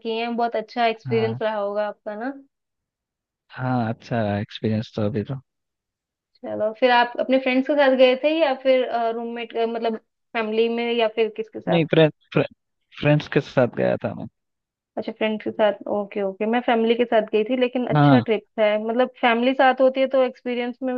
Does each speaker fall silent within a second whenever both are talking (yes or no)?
yes